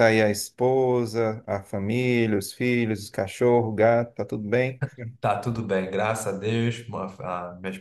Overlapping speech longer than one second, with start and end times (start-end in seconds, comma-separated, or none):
none